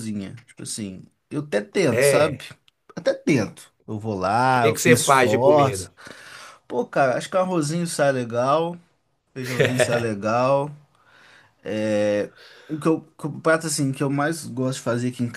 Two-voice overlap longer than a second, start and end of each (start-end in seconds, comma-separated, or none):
4.5-5.9